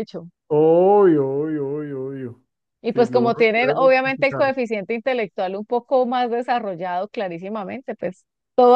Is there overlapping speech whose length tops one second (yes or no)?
yes